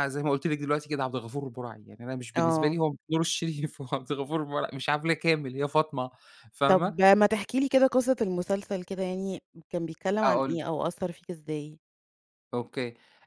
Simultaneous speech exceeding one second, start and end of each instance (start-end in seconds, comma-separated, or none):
none